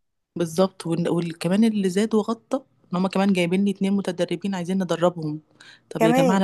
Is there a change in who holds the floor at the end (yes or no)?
no